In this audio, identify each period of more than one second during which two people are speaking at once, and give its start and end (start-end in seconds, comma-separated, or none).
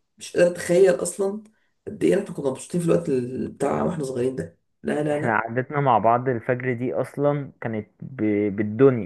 none